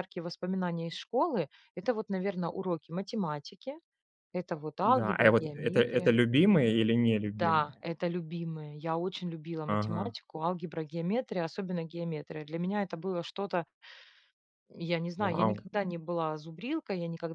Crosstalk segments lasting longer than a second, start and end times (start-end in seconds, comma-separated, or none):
4.8-6.2